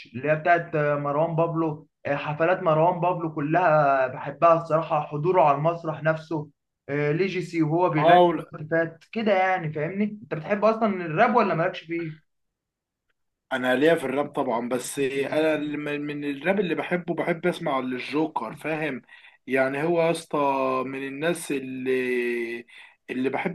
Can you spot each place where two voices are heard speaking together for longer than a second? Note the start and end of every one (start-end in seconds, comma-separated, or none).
none